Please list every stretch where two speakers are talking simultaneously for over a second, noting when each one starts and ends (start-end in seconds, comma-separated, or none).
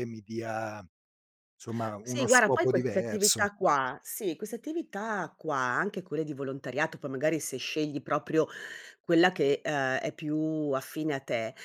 2.0-3.5